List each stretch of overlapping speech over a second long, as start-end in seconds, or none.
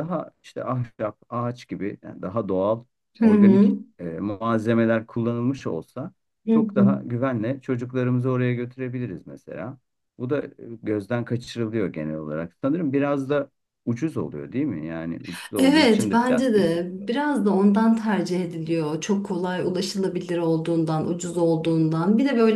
15.6-17.3